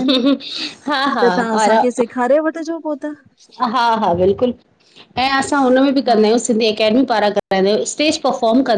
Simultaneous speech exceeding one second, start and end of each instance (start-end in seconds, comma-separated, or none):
none